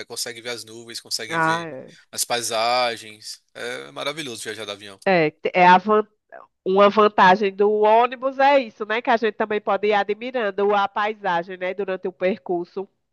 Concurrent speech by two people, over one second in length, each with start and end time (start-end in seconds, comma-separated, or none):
none